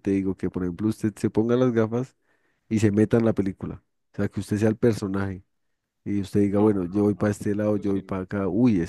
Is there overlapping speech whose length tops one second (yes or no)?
yes